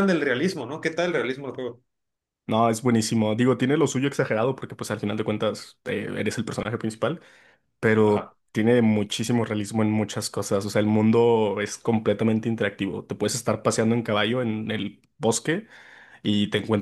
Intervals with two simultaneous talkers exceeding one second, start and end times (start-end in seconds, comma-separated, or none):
none